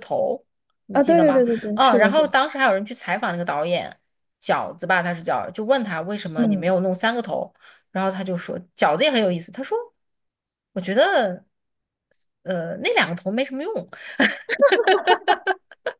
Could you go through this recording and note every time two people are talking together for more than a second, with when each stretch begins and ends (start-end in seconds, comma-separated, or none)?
0.9-2.3